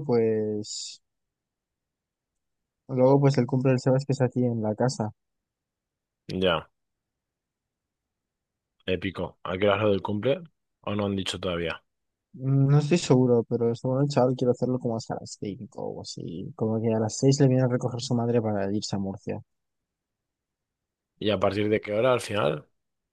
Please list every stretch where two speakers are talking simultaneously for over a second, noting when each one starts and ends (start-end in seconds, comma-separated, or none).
none